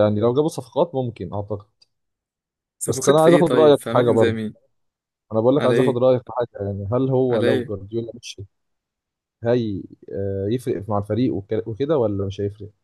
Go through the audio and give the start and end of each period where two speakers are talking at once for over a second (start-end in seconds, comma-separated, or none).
2.9-4.4